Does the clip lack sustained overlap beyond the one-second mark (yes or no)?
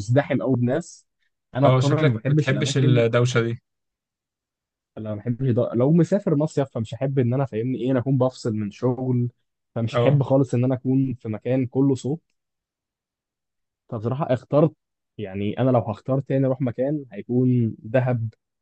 no